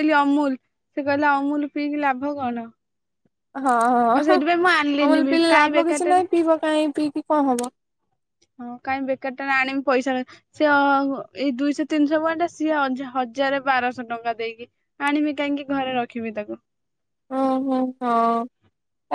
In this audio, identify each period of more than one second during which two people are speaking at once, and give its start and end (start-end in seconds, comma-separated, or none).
4.2-6.2